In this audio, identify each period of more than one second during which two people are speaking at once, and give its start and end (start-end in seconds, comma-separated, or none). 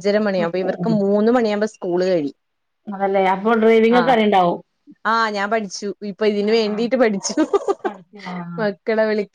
none